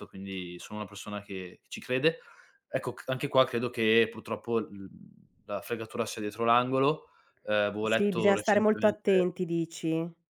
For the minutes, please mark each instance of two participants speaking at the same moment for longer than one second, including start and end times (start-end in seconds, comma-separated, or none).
7.8-9.3